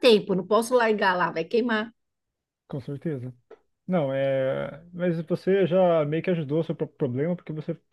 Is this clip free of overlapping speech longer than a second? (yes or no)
yes